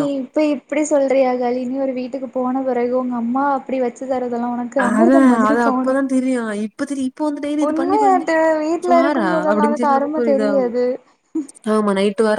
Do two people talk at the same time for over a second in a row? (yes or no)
yes